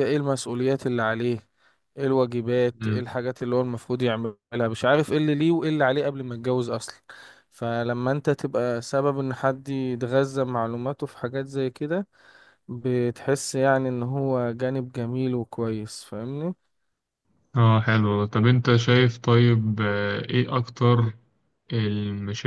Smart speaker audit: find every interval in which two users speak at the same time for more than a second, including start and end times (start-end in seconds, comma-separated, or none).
none